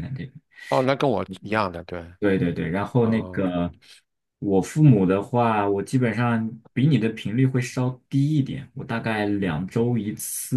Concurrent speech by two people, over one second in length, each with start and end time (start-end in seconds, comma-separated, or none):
none